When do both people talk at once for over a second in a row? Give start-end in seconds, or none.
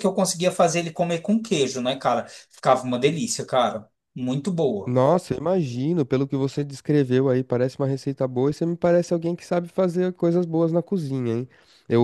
none